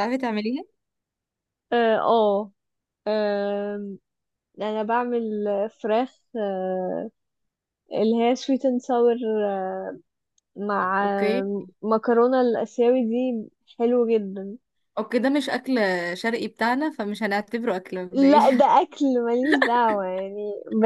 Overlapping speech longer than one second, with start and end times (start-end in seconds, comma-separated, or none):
none